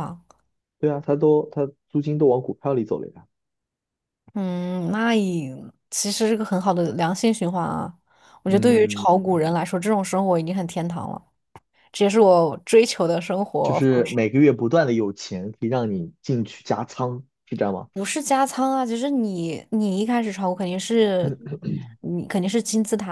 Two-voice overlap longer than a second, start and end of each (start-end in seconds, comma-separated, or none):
none